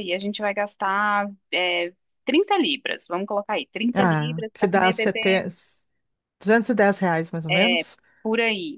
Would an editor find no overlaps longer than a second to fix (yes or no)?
no